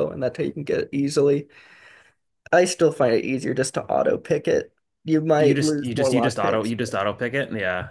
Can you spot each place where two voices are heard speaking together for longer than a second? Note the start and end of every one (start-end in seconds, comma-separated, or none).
5.4-6.9